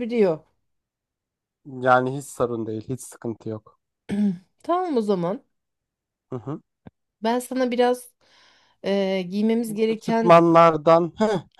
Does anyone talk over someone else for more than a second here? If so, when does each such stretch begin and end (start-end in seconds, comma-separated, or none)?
none